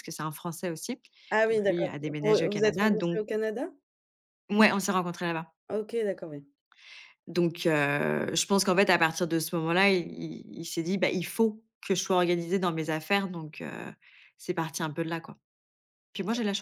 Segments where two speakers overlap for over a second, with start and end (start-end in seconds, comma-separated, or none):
1.5-3.2